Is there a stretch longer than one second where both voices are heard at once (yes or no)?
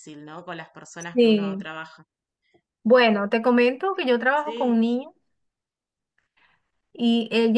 no